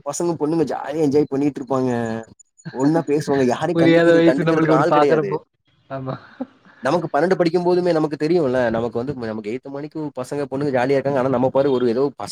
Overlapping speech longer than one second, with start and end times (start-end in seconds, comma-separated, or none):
3.8-5.3